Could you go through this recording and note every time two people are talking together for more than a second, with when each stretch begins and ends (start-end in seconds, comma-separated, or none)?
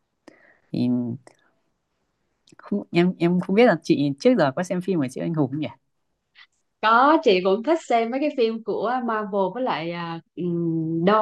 none